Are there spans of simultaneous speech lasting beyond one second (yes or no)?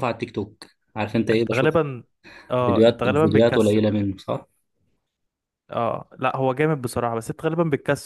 yes